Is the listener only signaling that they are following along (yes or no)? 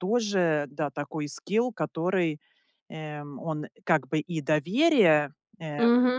no